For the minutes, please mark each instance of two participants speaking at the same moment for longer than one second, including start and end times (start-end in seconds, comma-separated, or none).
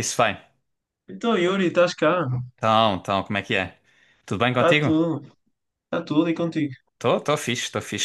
none